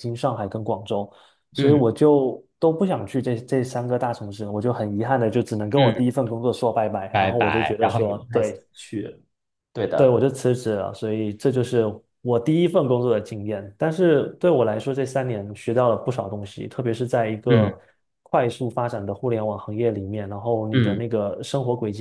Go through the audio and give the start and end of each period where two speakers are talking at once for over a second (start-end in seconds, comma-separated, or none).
7.1-8.6